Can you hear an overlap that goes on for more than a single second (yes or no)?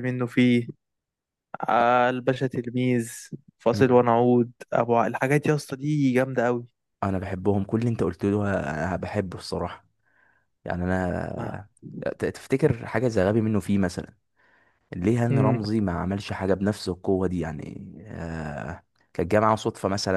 no